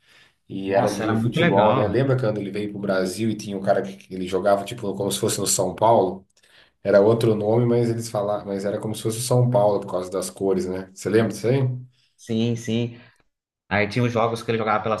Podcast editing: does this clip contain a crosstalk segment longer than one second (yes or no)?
yes